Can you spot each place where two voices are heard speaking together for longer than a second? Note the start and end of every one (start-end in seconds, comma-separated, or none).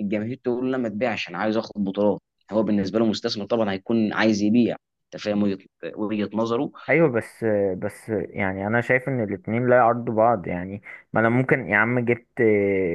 none